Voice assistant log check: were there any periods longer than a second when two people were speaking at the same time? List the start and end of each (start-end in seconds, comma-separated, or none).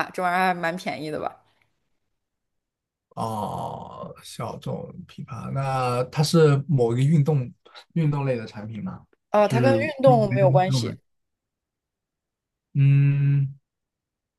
9.4-10.9